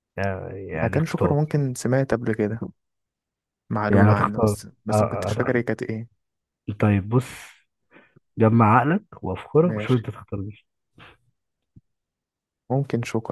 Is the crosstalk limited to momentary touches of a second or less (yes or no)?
no